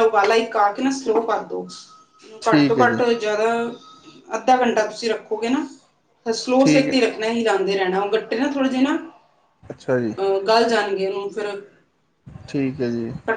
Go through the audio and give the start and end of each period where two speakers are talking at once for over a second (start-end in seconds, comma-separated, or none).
none